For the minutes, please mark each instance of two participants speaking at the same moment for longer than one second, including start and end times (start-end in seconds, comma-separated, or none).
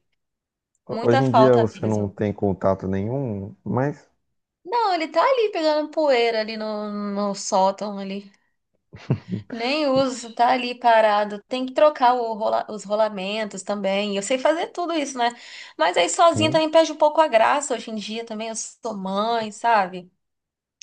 0.9-2.1